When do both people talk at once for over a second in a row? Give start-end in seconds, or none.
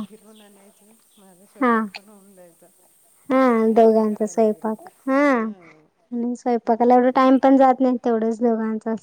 5.4-6.9